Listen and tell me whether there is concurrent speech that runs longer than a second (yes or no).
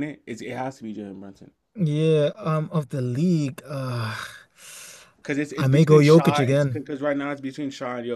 yes